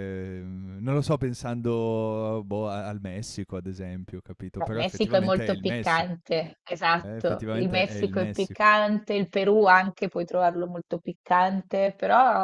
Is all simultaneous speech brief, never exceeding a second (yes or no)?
no